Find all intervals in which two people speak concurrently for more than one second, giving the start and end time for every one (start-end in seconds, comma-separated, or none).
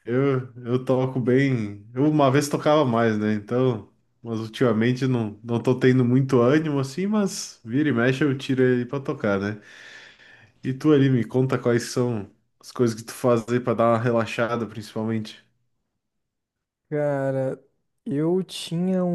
none